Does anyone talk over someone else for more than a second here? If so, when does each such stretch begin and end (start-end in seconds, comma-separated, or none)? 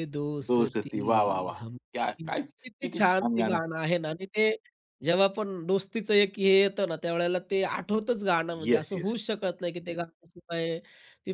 0.5-3.6